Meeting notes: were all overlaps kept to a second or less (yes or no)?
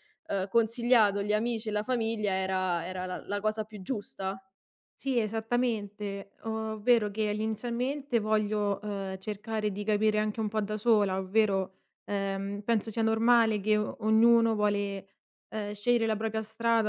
yes